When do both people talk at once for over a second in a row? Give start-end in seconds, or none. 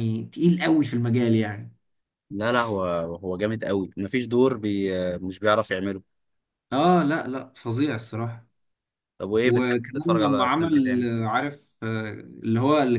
9.4-11.1